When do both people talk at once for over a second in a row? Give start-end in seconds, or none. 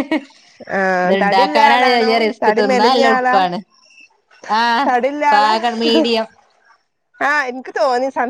1.0-3.4